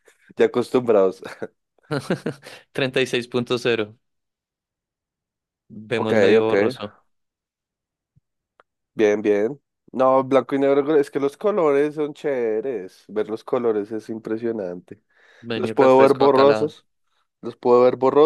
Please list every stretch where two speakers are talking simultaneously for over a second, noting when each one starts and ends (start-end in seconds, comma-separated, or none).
15.5-16.7